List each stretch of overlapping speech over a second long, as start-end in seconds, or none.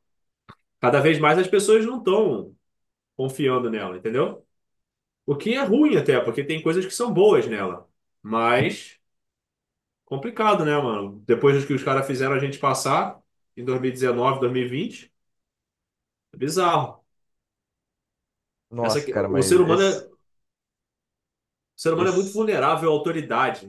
18.8-20.1